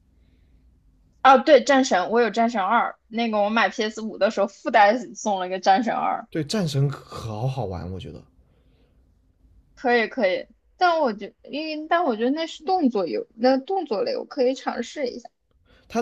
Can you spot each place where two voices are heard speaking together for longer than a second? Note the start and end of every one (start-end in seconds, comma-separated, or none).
none